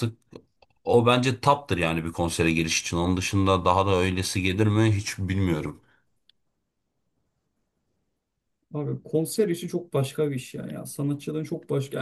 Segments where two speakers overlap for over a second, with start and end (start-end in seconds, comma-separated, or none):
none